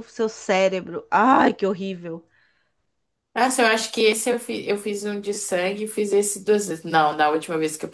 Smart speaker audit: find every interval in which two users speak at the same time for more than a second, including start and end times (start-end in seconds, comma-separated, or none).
none